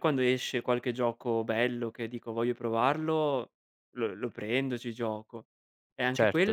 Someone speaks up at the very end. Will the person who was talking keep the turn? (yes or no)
yes